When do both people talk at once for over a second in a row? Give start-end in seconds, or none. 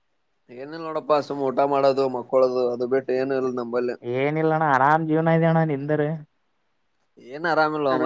none